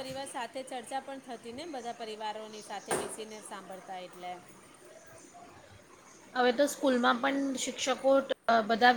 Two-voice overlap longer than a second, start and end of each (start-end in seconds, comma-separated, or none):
none